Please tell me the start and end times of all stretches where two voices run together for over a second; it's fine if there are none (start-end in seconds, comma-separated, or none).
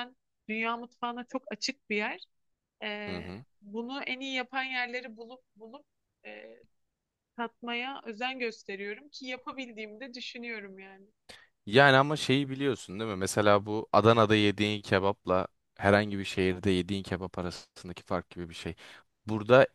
none